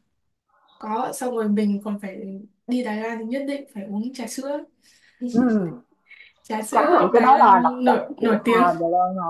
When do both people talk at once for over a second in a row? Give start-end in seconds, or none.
6.7-8.6